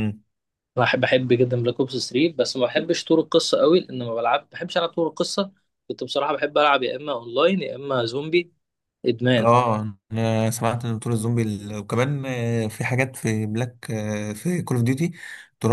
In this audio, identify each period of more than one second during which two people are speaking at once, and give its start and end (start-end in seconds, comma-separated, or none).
none